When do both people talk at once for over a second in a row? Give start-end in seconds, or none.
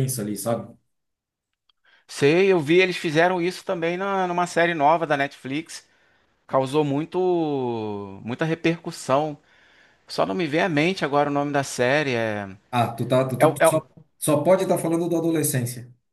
none